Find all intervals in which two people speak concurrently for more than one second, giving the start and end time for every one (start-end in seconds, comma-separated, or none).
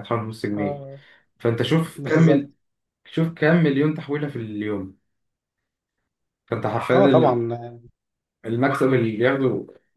none